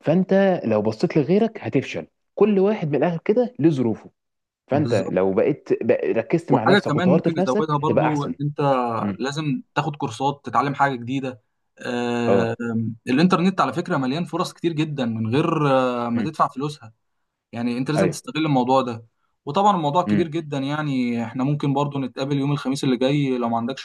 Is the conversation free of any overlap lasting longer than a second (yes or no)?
no